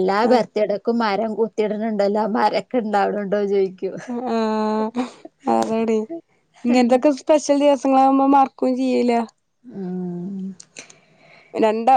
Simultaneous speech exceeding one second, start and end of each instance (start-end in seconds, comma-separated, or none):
none